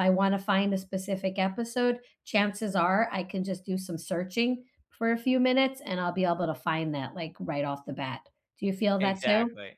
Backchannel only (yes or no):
no